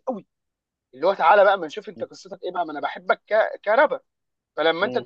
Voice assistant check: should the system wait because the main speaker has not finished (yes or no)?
yes